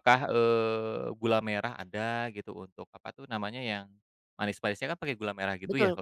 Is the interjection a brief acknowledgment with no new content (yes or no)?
no